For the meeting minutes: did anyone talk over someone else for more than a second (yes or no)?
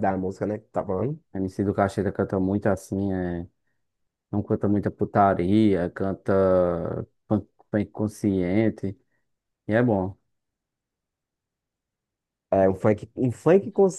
no